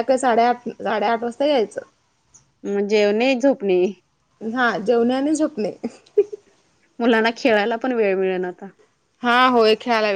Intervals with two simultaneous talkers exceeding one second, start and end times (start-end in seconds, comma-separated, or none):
none